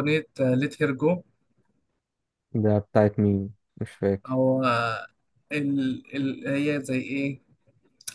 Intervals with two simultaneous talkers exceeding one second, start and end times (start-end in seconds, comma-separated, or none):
none